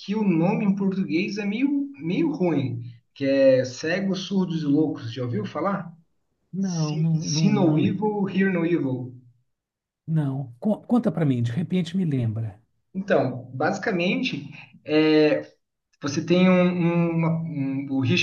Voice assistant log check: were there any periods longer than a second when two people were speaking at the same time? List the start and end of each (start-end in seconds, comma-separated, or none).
6.6-7.9